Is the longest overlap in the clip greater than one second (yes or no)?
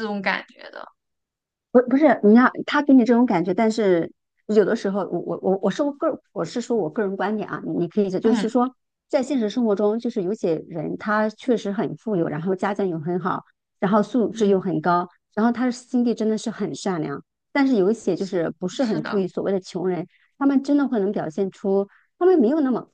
no